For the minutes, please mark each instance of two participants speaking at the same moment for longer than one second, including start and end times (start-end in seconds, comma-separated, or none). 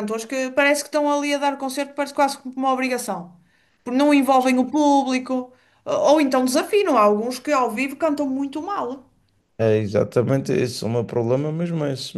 none